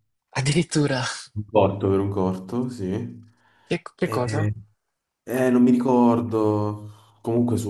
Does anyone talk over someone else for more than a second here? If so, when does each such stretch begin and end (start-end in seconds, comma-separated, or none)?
none